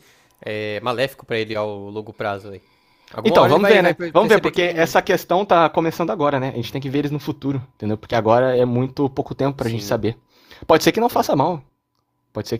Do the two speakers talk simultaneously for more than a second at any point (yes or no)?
yes